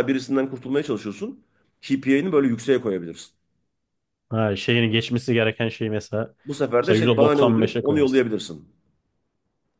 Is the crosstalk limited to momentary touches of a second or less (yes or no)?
no